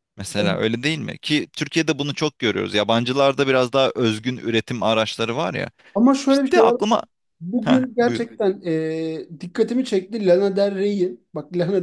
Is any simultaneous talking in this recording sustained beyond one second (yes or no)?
no